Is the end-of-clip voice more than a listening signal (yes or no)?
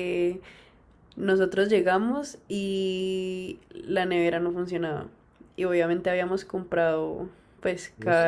no